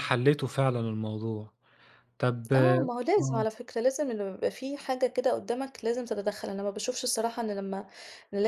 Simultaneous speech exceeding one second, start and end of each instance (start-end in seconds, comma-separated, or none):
none